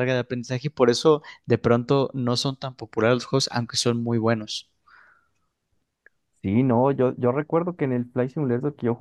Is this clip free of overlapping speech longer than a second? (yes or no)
yes